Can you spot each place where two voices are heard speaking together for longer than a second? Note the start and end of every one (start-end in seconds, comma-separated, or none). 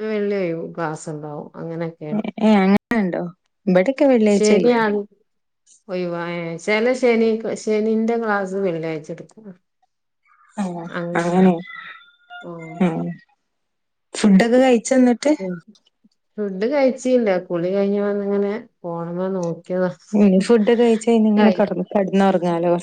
none